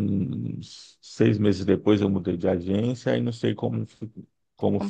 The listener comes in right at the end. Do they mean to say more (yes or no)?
no